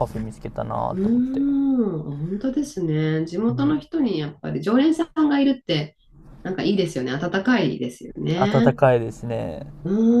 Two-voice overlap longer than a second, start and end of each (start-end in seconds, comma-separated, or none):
none